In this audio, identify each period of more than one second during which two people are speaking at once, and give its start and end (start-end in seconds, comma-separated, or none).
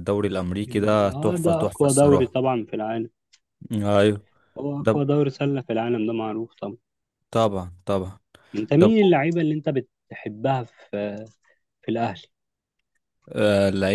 1.1-2.4